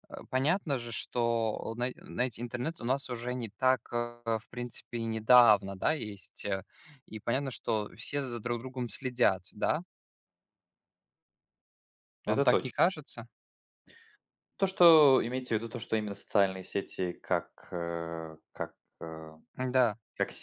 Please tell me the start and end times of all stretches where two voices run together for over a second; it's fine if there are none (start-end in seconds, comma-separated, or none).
none